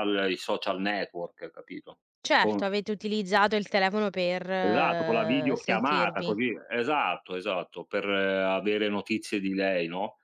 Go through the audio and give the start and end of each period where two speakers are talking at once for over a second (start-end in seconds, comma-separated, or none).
4.6-6.4